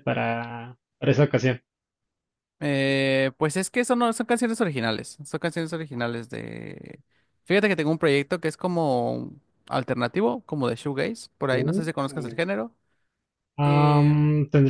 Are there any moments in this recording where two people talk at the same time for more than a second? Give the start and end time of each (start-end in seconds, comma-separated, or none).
none